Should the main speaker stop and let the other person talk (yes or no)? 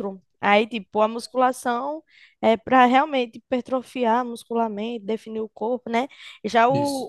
no